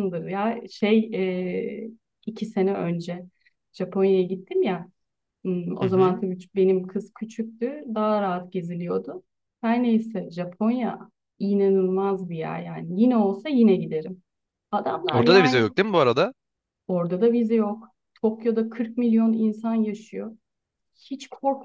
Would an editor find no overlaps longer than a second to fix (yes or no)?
yes